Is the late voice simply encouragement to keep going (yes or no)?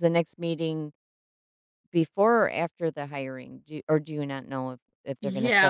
no